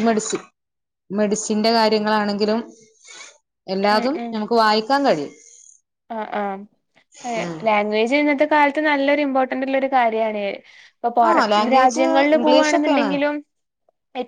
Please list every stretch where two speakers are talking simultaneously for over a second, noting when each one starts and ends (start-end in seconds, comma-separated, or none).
11.3-13.1